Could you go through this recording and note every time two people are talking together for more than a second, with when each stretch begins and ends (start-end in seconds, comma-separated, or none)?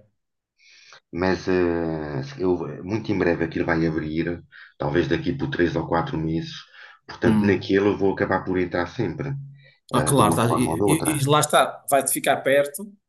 9.9-11.2